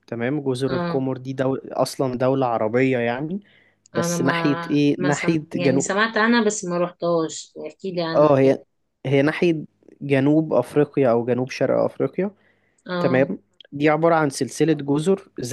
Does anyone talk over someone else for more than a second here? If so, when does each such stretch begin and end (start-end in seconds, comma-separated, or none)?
3.9-6.0